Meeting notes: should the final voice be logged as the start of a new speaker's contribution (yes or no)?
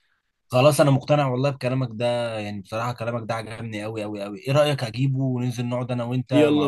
yes